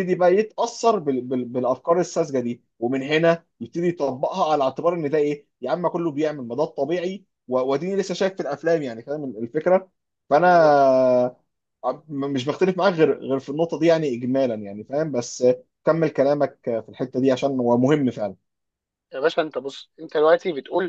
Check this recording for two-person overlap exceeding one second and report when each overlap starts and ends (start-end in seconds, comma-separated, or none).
none